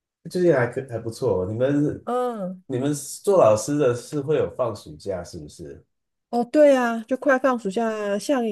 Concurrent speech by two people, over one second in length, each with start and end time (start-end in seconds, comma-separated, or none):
none